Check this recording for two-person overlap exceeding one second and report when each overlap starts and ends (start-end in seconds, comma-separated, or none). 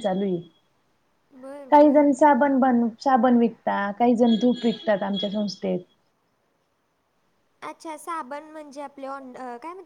none